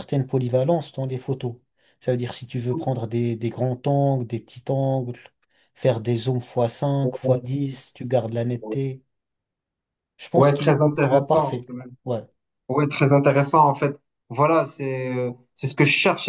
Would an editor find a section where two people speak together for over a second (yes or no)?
yes